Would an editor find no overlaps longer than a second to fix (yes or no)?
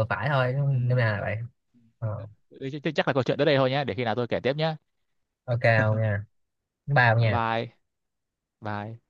yes